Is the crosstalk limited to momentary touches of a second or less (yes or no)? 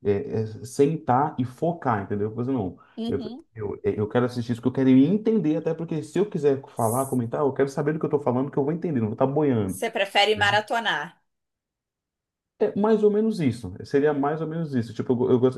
yes